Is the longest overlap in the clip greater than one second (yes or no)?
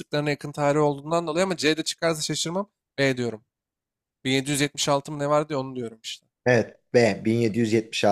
no